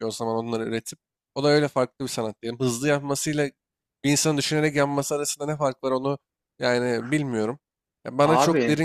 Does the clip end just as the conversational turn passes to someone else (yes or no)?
no